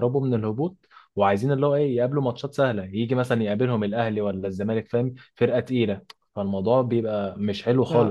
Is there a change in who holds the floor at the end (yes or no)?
no